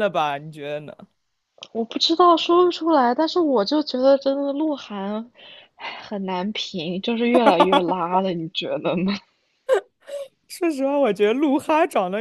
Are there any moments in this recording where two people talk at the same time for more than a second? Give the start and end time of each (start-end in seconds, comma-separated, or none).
none